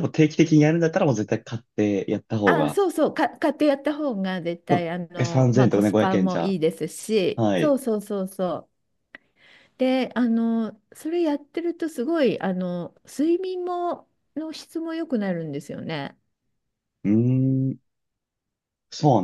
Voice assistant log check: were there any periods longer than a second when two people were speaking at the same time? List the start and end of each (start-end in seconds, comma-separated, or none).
4.7-6.6